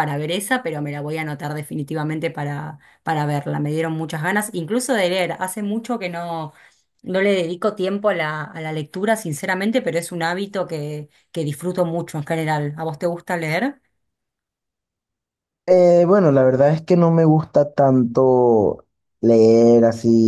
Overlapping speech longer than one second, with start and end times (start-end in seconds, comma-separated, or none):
none